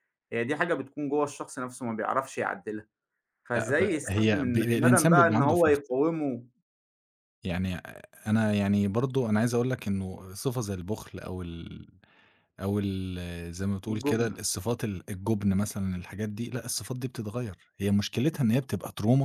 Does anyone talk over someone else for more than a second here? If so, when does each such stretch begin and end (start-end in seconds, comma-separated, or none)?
3.5-5.8